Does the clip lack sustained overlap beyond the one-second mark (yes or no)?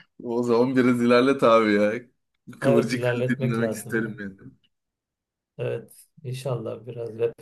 no